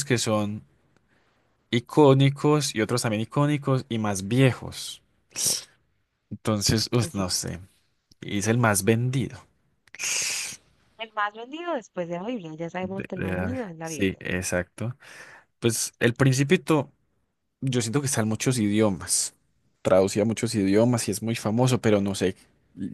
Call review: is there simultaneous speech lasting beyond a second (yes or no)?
yes